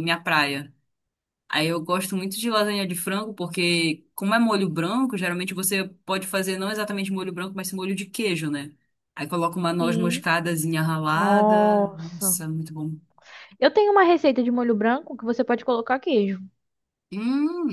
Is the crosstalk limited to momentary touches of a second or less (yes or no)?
no